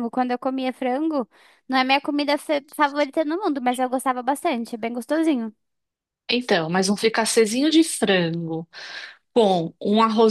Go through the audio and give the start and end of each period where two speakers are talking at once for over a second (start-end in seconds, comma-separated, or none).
none